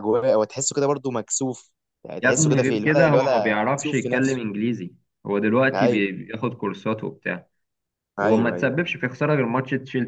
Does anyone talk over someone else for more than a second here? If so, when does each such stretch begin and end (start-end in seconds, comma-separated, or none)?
2.2-4.4